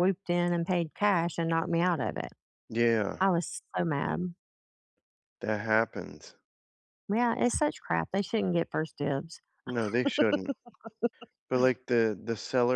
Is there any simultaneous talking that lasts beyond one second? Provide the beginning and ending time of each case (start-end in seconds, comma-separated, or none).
none